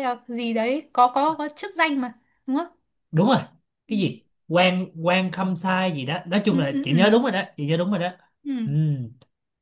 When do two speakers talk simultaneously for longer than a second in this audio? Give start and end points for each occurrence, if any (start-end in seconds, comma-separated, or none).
none